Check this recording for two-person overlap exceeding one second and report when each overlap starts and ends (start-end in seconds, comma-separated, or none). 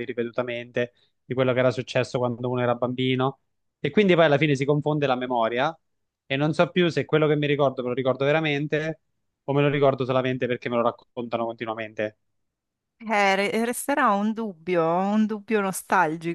none